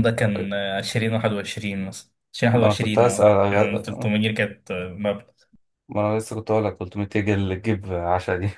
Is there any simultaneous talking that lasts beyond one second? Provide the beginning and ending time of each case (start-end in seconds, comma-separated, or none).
2.5-4.1